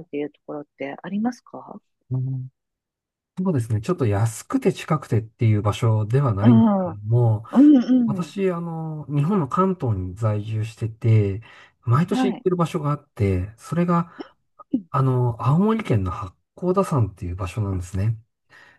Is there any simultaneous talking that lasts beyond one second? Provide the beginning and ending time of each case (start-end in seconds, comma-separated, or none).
none